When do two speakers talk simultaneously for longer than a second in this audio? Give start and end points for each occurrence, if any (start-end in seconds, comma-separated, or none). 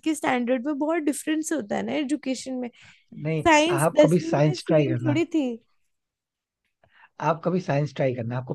3.5-5.2